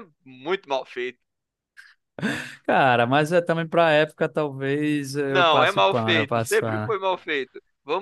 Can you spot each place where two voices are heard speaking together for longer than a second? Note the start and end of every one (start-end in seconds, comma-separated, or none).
5.3-6.9